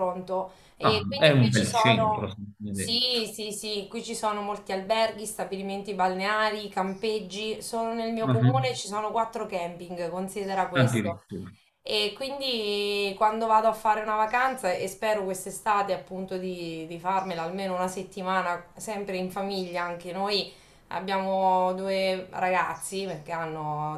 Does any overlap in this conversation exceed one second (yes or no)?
yes